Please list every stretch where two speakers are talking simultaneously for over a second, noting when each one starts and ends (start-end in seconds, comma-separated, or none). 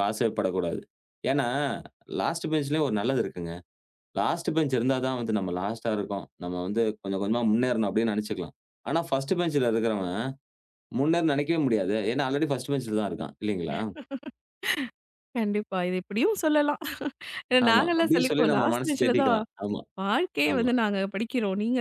17.7-19.4